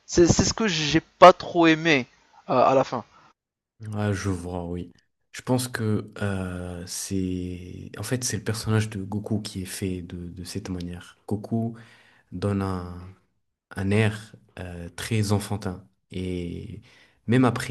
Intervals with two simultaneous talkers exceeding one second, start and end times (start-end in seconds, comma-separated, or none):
none